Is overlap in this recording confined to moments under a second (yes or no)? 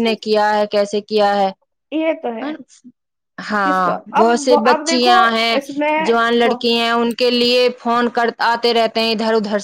no